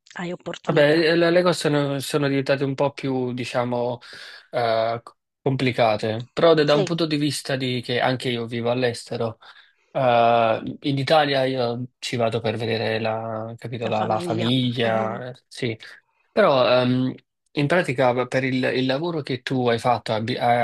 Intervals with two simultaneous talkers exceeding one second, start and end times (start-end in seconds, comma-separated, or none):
13.9-15.2